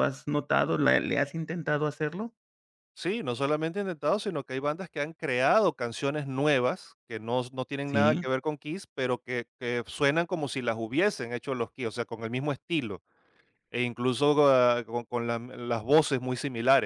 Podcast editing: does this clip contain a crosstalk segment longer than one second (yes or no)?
no